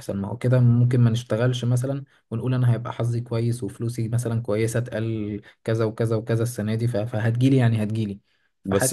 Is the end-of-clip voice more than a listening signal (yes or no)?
no